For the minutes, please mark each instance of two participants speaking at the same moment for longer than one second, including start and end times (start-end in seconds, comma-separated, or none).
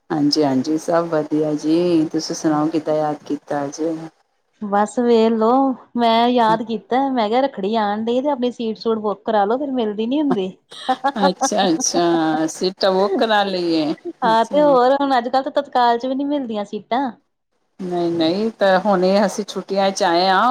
none